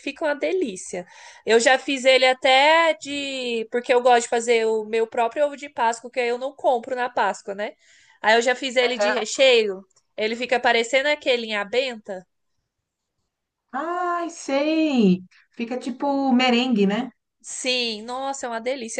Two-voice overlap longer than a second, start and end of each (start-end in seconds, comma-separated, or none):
none